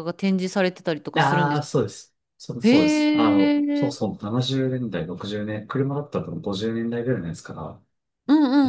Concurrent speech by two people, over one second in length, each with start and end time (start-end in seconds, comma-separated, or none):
2.6-4.0